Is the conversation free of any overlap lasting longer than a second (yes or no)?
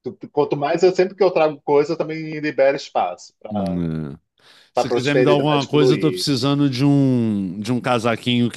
no